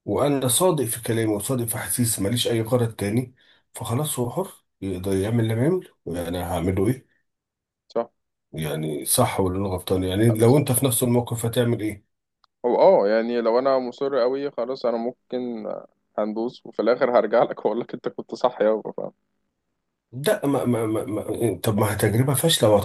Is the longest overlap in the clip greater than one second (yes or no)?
no